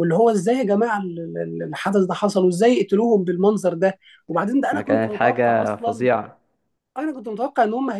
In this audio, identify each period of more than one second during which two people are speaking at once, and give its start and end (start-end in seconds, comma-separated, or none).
4.7-6.1